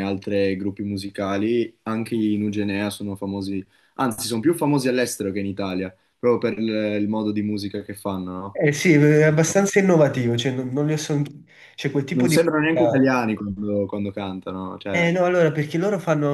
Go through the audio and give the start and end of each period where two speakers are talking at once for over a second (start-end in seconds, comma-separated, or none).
none